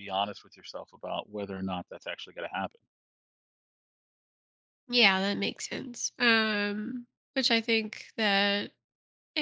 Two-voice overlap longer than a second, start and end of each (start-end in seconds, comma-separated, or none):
none